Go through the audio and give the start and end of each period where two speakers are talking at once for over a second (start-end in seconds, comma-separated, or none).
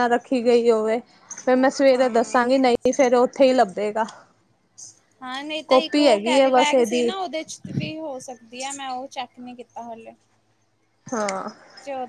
5.7-7.1